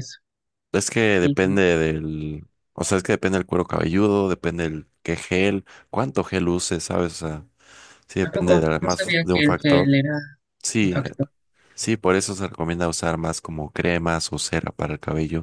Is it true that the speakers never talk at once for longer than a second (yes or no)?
no